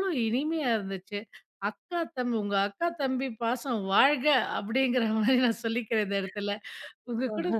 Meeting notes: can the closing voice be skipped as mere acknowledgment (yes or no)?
yes